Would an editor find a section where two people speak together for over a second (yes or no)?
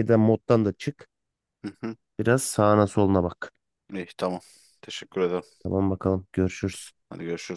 no